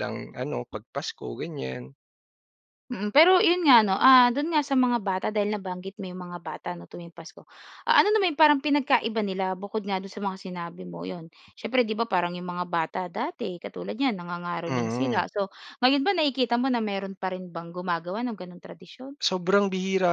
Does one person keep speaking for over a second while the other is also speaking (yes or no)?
no